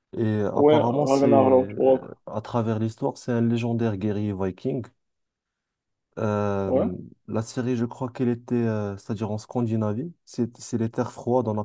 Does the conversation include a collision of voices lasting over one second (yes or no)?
yes